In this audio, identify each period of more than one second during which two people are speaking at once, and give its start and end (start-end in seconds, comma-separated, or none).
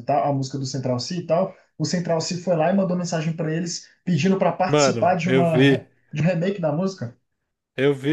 4.7-5.9